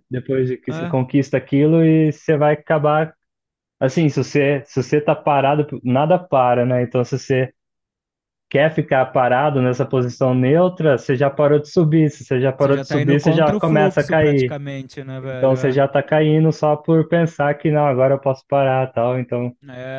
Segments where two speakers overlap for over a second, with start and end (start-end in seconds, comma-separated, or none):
12.6-14.6